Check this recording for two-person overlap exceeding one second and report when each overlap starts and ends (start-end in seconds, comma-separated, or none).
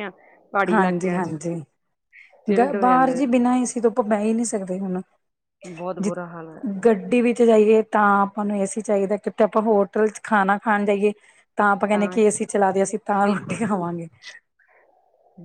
none